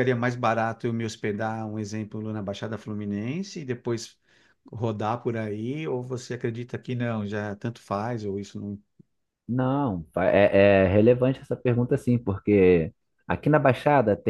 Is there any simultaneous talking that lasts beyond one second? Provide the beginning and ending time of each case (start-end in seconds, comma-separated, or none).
none